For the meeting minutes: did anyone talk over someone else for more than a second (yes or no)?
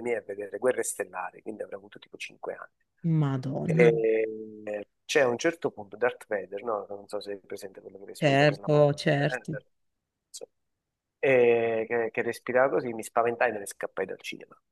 yes